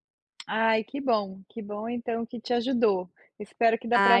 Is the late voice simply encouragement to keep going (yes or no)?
yes